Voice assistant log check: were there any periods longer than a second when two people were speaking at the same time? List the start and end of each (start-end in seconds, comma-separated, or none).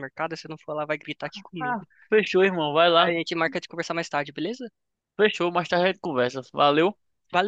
none